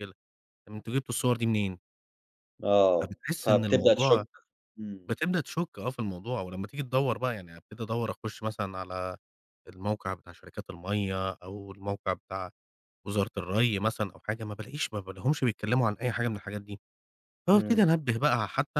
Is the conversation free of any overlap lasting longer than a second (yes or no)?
no